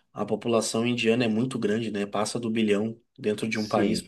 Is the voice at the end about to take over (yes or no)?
no